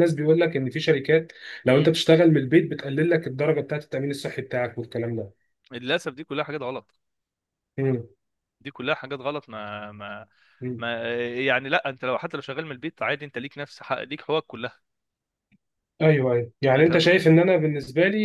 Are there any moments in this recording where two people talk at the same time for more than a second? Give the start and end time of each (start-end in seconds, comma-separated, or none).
none